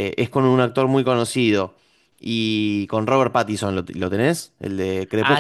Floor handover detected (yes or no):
yes